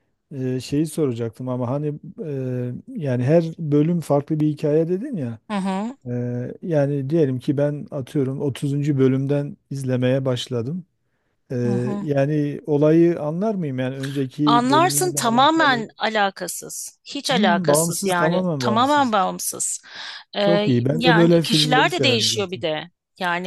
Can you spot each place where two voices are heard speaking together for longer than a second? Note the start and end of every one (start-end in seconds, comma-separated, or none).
14.4-15.8, 17.3-19.1, 20.4-22.6